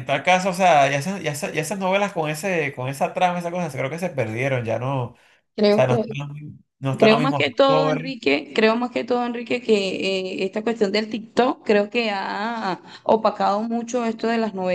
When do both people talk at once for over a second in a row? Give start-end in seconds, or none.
7.0-8.2